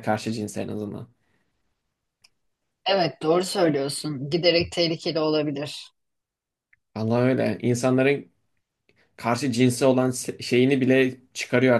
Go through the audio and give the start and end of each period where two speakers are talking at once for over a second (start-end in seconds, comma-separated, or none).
none